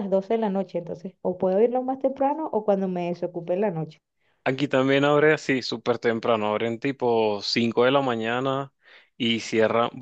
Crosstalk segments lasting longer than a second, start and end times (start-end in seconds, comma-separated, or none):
none